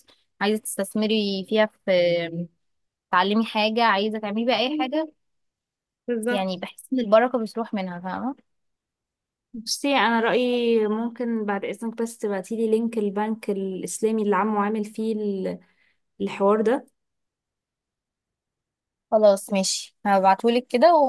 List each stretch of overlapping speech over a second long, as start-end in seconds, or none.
none